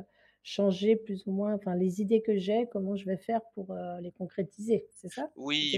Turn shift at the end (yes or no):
yes